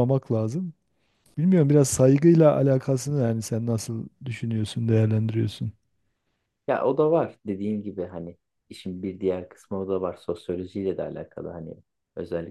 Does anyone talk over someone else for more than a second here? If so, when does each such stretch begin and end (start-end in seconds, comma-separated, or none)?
none